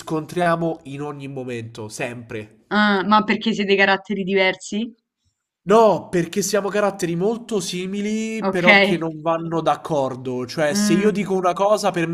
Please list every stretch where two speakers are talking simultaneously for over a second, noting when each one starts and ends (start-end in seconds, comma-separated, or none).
none